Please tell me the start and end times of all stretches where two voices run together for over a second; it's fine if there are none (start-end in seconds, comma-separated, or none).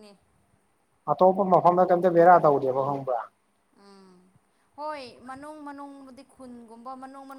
none